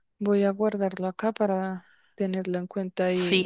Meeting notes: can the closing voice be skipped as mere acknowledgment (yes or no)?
no